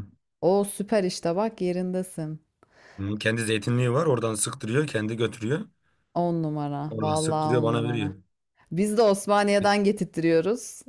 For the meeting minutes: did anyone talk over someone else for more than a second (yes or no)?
yes